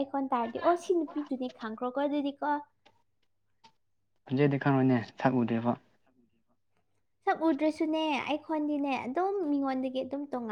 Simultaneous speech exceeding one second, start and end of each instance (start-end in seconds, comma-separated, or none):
none